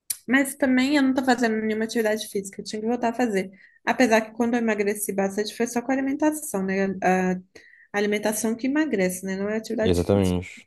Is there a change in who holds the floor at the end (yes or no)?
no